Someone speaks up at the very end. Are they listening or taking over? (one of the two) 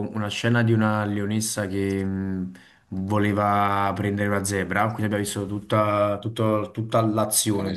listening